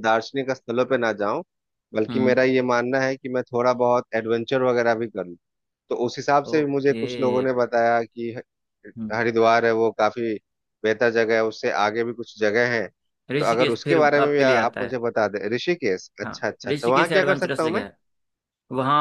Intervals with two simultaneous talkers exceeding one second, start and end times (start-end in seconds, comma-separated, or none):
13.4-15.0, 16.2-17.8